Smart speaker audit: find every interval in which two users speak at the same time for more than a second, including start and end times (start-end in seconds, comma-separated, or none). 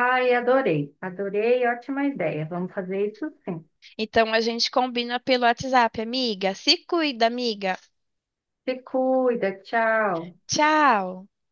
none